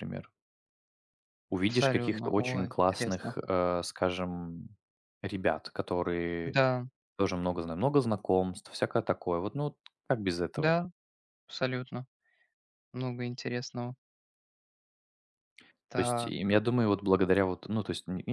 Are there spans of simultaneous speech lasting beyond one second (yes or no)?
yes